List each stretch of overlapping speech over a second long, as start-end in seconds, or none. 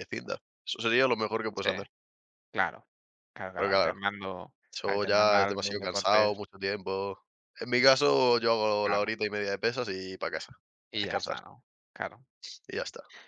4.7-6.4